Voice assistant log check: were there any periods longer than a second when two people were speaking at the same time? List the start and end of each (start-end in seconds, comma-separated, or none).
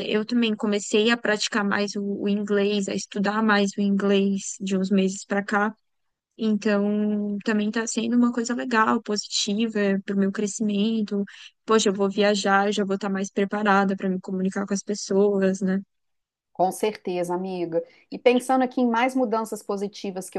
none